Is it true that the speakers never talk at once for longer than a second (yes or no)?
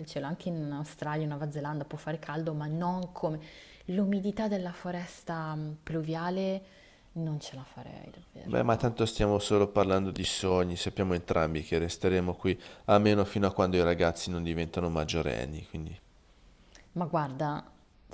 yes